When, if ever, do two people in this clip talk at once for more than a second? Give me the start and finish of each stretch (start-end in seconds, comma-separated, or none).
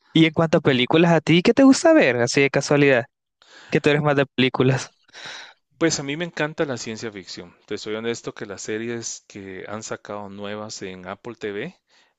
none